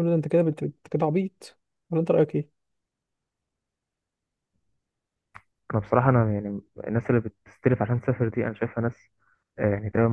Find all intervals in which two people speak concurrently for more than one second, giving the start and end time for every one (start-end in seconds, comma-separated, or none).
none